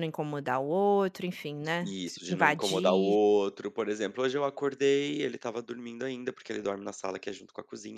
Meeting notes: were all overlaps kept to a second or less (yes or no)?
no